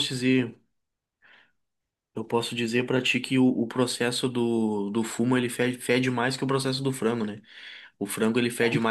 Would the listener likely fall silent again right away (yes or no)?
yes